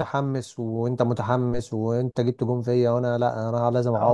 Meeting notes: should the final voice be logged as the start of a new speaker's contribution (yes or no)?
yes